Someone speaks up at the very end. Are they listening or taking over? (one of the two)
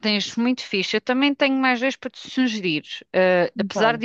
listening